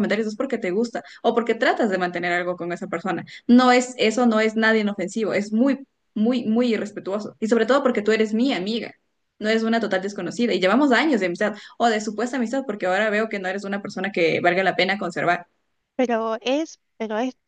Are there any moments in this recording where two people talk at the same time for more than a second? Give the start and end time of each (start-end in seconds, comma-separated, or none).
none